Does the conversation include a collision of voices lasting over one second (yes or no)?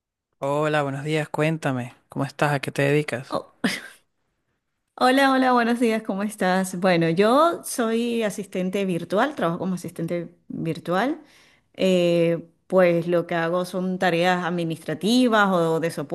no